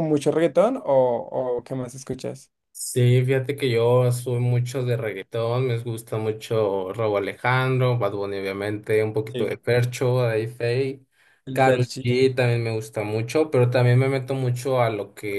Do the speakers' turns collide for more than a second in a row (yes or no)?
no